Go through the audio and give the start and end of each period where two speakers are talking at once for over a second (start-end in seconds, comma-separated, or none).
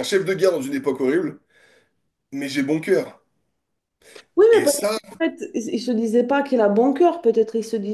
none